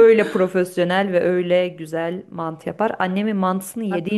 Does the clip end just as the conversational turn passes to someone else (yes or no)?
no